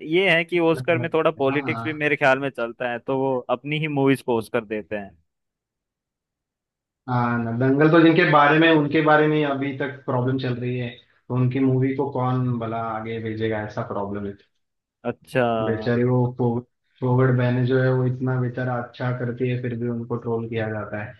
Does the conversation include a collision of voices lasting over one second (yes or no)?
yes